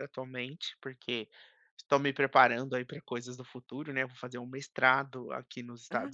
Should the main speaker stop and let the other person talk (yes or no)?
no